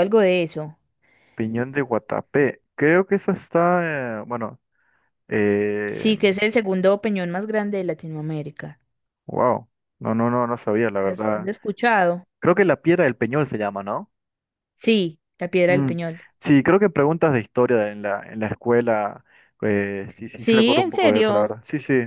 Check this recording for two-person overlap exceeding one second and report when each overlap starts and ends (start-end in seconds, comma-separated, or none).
20.3-21.6